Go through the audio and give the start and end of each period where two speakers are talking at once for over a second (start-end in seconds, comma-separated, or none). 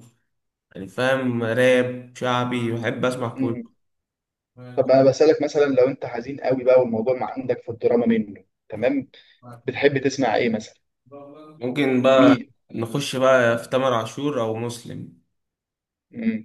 none